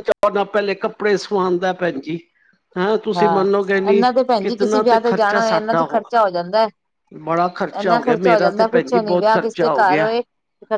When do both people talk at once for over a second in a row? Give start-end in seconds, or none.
4.4-5.8, 8.0-10.1